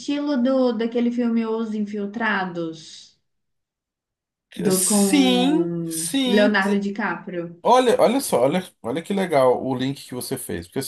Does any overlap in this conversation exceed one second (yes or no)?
yes